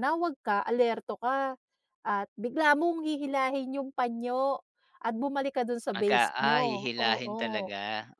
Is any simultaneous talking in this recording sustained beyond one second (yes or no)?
yes